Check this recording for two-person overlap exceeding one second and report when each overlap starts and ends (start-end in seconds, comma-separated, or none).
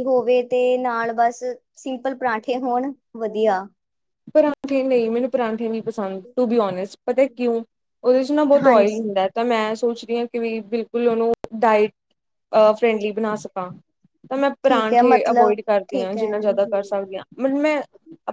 14.7-16.9